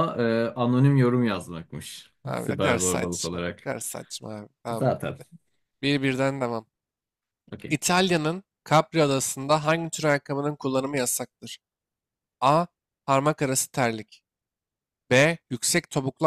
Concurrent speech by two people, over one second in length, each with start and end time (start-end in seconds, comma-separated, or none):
2.2-3.7